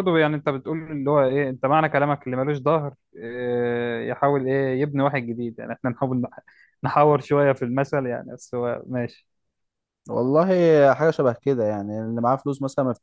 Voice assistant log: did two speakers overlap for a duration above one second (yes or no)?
no